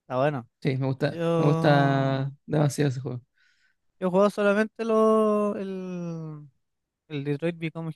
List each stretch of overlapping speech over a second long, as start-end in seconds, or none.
1.1-2.3